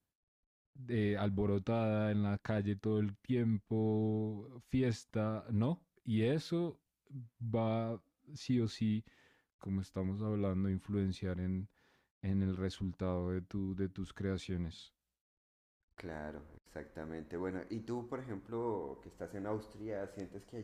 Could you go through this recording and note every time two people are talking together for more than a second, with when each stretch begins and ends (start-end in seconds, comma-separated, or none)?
none